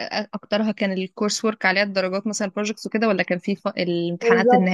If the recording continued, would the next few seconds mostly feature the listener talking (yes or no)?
yes